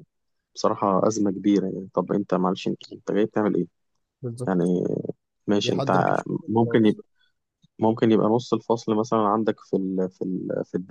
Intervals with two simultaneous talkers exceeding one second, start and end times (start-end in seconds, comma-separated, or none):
5.6-7.0